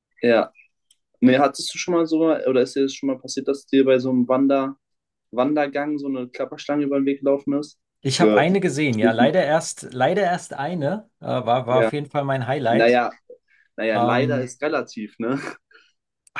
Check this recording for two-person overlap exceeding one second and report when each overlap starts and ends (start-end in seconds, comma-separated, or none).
8.2-9.4